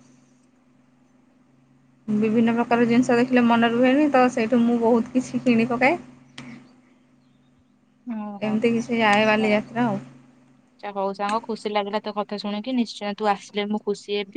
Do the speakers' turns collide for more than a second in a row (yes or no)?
yes